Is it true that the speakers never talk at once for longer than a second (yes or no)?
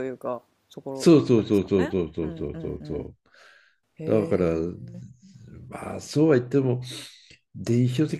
no